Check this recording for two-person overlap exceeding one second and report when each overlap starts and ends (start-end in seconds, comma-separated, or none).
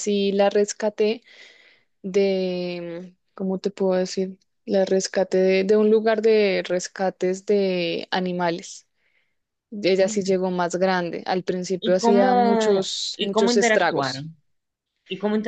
11.8-14.3